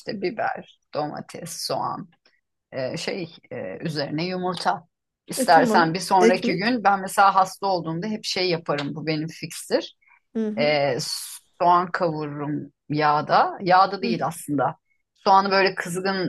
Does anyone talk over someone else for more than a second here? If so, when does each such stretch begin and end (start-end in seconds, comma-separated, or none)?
5.4-6.8